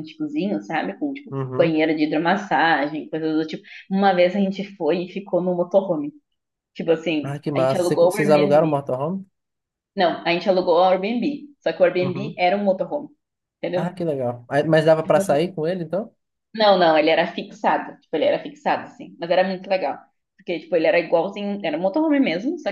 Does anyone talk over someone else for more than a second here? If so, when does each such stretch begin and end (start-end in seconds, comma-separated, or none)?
7.2-8.8